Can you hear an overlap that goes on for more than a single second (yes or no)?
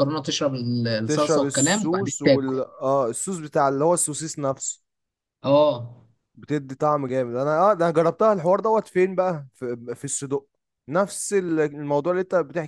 yes